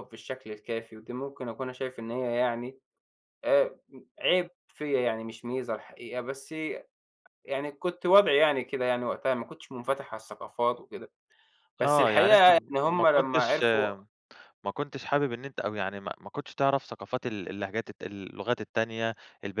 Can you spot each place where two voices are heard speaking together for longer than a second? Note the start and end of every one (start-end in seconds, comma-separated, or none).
11.8-13.6